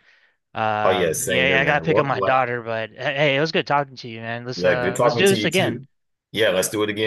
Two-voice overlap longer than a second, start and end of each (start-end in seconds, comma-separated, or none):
0.8-2.4, 4.5-5.8